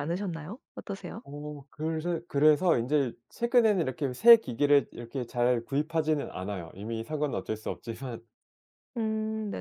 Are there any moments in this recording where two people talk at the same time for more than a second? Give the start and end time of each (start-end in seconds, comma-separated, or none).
none